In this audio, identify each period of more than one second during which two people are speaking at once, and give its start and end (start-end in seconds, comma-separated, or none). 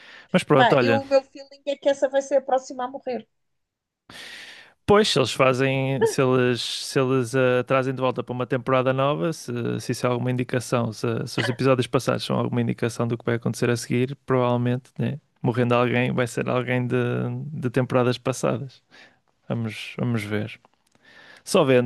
none